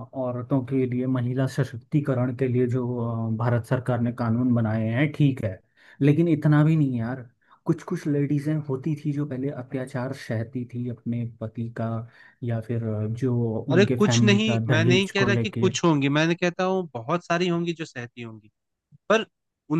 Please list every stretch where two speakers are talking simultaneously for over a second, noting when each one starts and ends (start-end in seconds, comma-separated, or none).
13.7-15.7